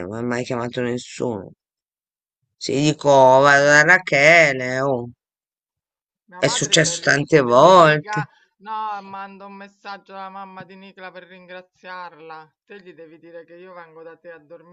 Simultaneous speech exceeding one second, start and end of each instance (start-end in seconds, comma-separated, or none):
6.4-8.3